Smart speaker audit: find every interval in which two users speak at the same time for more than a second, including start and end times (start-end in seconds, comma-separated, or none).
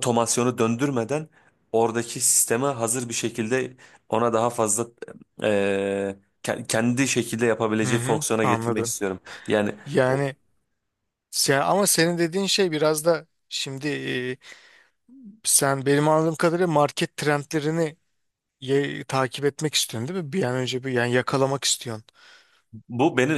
none